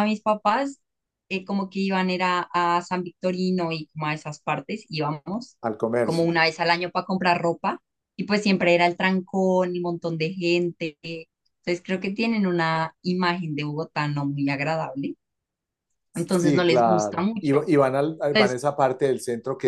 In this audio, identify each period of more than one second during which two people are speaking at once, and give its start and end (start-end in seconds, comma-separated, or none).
16.1-17.7